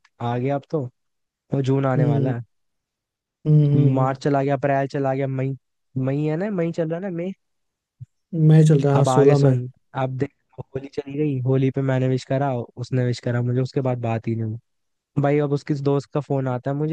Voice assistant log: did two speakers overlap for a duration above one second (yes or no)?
no